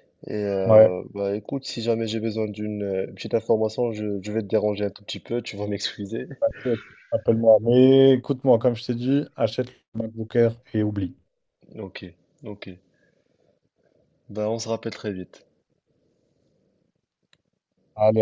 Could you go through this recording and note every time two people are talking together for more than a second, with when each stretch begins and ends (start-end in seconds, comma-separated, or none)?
none